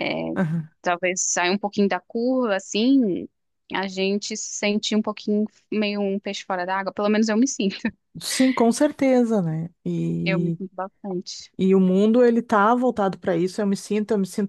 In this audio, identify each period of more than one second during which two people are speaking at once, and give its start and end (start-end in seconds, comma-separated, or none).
none